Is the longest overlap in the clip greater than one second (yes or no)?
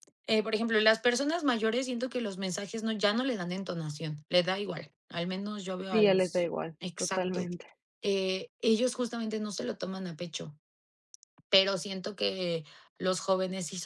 yes